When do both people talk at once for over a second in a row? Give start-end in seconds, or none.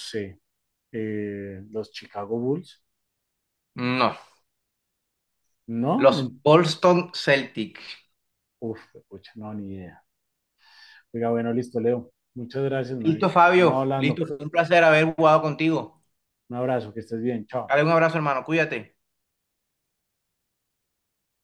13.0-14.2